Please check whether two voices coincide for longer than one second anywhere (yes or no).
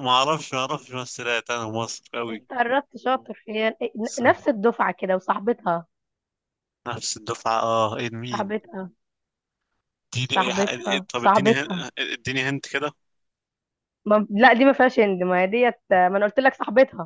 yes